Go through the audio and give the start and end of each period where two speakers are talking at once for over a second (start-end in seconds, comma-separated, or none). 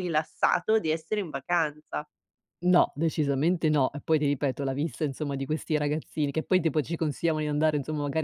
none